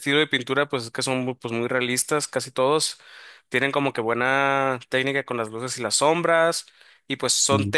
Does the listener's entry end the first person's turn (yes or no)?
no